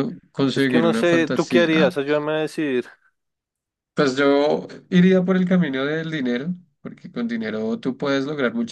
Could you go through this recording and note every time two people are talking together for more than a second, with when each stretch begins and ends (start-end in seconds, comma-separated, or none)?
0.5-1.9